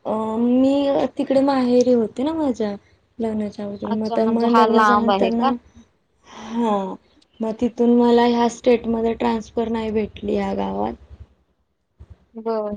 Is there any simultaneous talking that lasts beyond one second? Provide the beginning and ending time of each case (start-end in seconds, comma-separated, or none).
3.9-5.5